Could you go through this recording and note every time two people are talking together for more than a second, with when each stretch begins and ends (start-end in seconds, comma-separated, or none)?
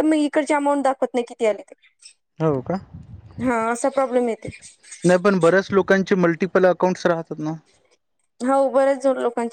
none